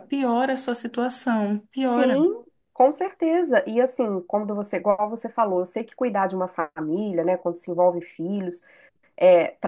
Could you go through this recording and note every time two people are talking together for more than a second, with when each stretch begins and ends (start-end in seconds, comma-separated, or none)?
none